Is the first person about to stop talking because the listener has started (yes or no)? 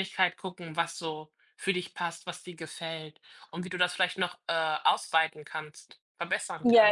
yes